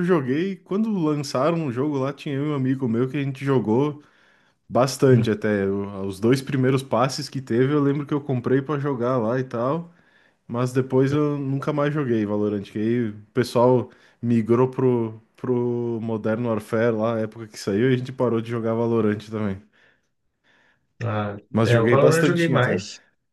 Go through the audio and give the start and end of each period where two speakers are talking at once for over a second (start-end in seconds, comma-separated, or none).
21.5-22.8